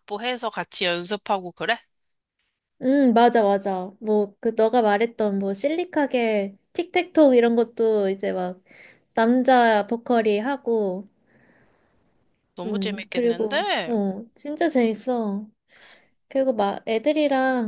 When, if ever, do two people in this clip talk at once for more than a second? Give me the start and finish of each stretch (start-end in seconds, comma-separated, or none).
12.7-13.9